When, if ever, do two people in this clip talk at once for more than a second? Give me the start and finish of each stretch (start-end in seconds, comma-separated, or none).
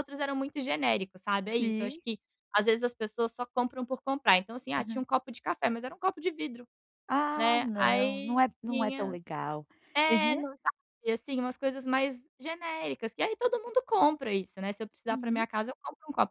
7.3-9.1